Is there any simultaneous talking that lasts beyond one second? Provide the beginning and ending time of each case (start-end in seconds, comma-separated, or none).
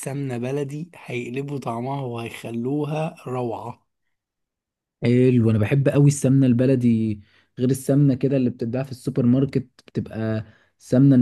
none